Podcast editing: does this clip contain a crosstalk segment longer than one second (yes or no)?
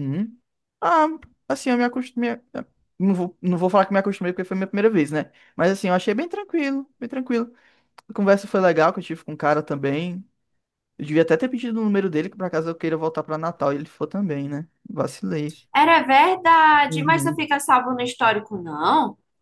no